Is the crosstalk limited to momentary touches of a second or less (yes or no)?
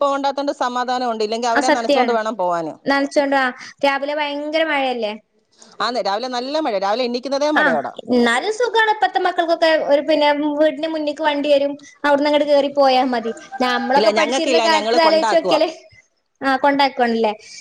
no